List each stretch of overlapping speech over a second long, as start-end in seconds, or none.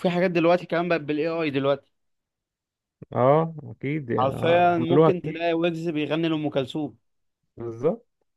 4.2-5.5